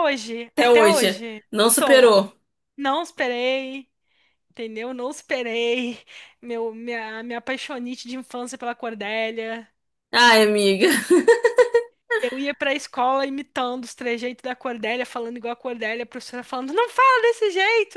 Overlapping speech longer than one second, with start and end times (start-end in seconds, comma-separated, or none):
0.5-2.1